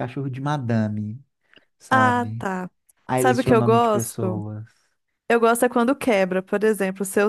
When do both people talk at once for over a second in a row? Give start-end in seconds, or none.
3.2-4.4